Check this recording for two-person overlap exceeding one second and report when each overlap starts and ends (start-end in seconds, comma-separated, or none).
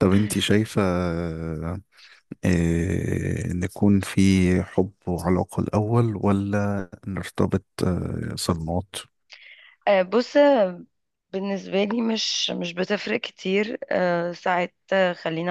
none